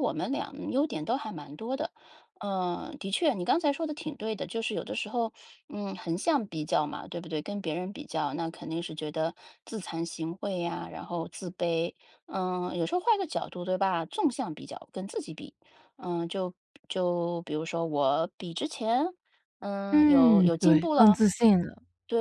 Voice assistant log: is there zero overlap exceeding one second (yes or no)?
no